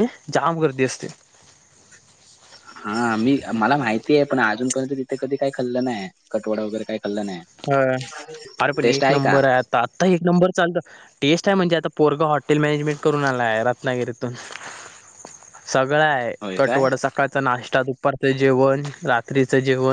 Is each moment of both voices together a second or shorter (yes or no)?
yes